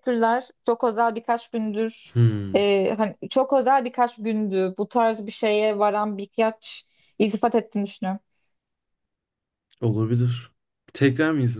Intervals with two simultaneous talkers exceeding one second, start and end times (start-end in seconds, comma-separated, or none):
none